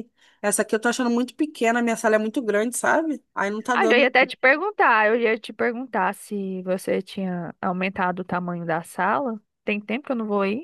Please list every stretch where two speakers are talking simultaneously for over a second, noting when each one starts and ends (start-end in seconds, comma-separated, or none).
none